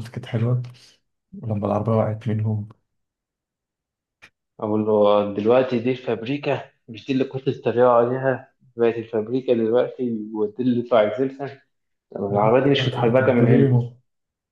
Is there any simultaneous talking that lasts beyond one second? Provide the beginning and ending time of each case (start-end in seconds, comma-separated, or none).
12.3-13.8